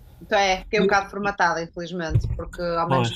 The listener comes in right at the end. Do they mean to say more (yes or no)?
no